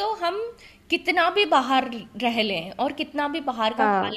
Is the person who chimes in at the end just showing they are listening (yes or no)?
yes